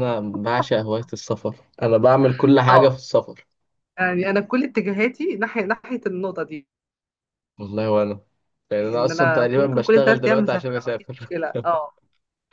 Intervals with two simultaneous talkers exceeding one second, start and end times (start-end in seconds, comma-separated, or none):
8.8-11.3